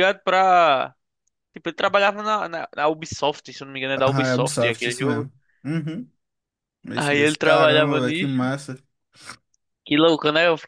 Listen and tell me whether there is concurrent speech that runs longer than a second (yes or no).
yes